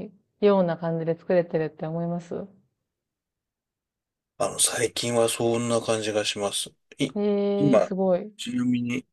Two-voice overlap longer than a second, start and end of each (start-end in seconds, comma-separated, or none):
none